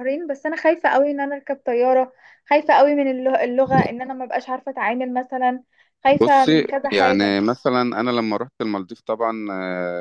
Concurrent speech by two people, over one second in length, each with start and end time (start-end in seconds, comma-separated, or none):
6.1-7.5